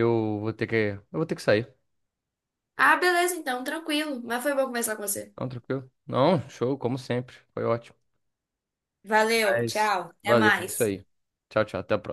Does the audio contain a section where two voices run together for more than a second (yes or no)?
yes